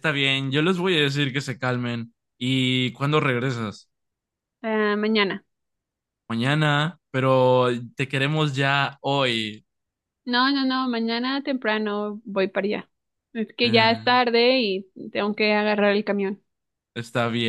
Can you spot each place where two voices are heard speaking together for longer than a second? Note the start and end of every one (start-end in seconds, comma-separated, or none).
none